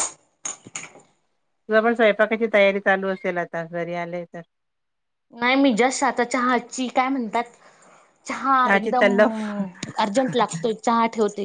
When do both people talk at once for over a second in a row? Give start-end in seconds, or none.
none